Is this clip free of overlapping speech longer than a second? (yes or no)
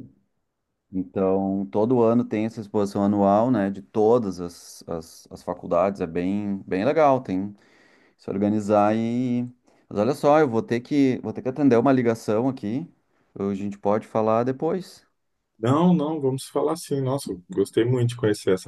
yes